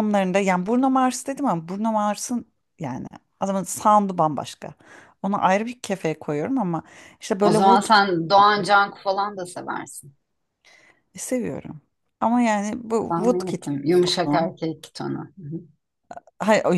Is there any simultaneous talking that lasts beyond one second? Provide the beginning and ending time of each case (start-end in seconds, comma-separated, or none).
none